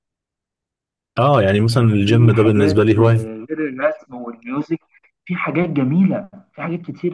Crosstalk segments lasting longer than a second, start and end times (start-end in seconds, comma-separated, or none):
1.7-3.2